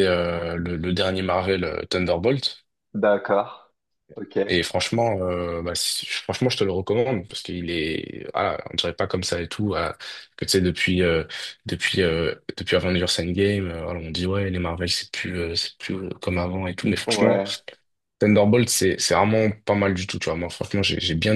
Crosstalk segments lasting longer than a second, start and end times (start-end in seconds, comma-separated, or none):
none